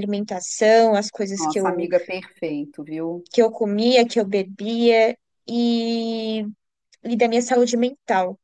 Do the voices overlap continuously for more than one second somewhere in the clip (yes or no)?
no